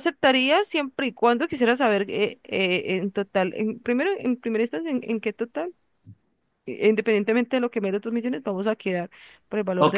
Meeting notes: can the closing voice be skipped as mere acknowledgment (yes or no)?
no